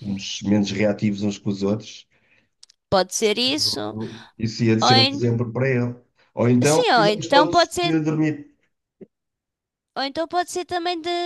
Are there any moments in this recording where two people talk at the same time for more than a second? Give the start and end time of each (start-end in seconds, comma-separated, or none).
6.6-8.0